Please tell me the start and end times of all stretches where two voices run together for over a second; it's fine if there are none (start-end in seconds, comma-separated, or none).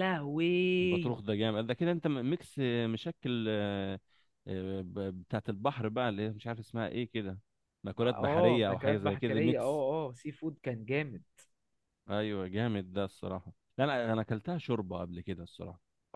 8.0-9.8